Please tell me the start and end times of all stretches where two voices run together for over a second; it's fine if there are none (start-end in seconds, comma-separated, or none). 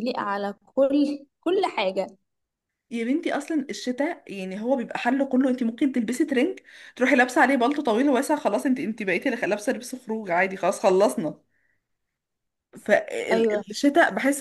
none